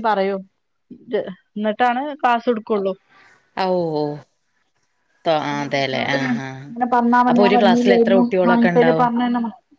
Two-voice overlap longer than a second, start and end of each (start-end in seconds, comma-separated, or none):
7.3-9.1